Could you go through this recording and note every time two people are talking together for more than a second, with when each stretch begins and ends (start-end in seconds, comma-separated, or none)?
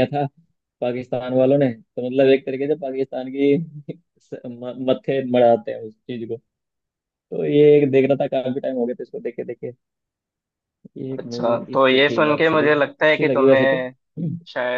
11.2-13.8